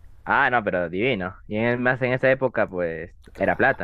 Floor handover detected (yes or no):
yes